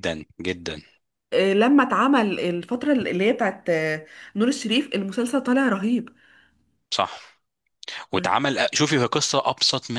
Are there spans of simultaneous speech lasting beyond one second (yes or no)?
no